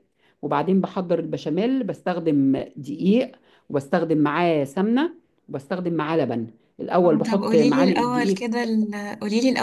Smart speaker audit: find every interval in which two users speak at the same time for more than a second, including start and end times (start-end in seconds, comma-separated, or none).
7.0-8.4